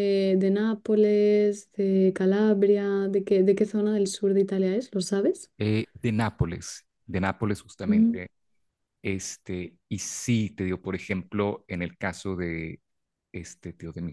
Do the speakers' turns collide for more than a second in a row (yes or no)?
no